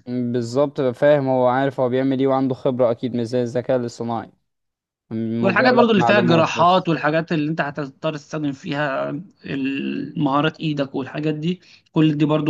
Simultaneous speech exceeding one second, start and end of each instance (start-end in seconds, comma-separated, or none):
5.4-6.9